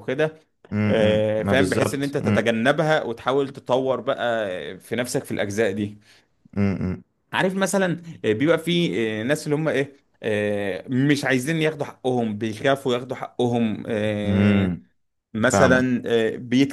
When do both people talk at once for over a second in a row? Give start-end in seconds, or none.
0.9-2.1